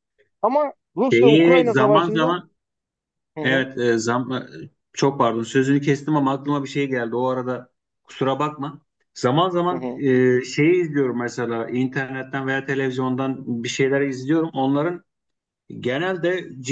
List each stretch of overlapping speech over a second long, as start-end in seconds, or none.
1.0-2.4